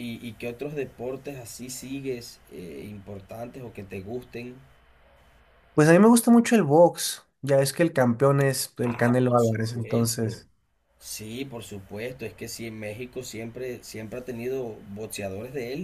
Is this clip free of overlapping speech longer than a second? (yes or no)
no